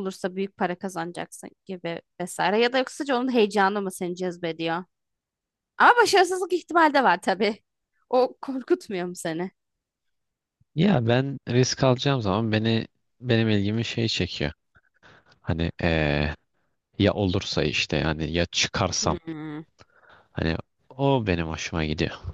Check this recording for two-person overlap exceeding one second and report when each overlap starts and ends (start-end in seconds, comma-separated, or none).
none